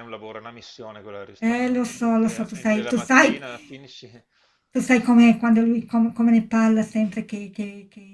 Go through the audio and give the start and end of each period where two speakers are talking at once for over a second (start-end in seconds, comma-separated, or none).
1.4-3.3